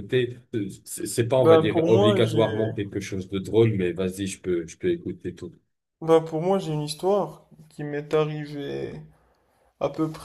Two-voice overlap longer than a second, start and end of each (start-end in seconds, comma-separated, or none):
1.4-2.7